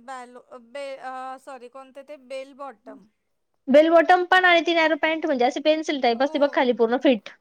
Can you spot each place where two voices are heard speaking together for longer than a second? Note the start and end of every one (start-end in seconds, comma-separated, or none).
none